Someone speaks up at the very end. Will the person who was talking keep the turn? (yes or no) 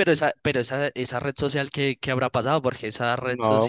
no